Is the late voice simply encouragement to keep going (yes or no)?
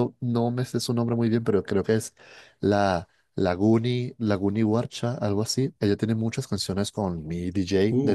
yes